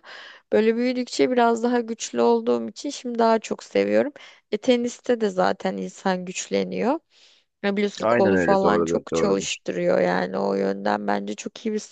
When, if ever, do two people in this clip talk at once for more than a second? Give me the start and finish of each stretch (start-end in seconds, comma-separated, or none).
8.0-9.6